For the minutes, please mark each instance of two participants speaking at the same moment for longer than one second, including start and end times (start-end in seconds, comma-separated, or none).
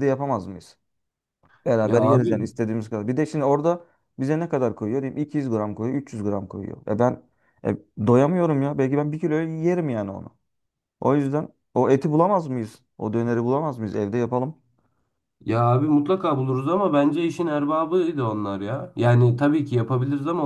none